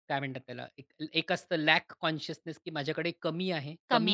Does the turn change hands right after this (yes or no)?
no